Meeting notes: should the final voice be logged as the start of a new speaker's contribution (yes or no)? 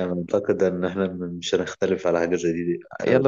yes